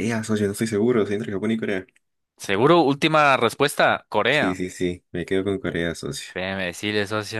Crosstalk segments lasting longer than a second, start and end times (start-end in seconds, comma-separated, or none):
none